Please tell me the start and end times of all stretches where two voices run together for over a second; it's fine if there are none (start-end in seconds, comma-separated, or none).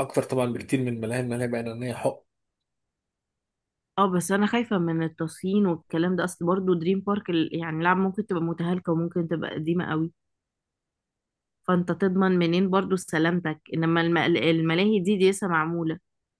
none